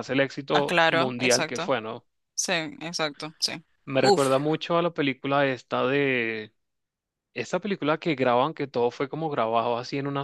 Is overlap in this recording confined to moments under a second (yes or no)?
no